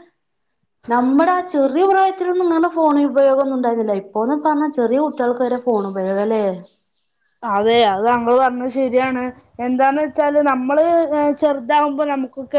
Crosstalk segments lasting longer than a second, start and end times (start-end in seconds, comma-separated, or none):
none